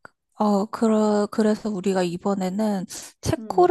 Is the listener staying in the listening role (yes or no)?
yes